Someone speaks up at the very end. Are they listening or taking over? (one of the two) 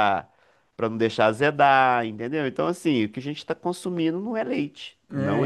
taking over